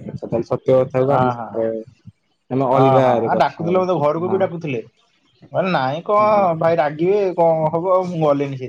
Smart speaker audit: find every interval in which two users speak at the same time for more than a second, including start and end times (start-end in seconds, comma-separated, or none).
2.8-4.5